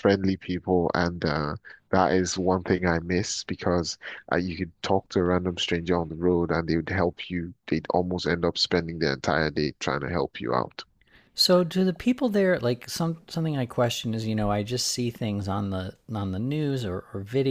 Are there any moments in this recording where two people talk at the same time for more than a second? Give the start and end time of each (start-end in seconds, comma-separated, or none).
none